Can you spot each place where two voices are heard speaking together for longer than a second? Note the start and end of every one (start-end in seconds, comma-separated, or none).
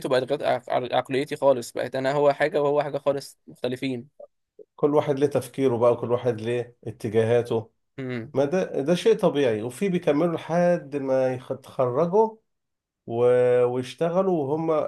none